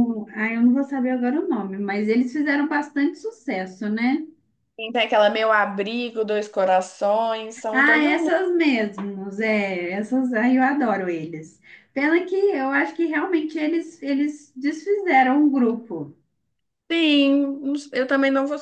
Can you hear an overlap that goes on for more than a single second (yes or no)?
no